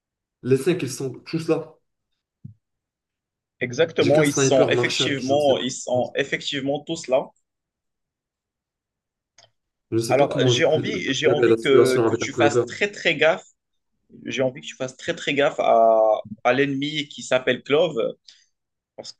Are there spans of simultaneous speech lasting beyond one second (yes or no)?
yes